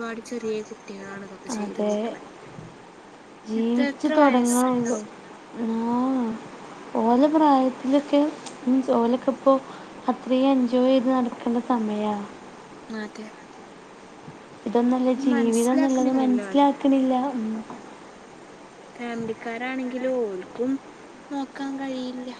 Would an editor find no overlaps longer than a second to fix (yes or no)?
no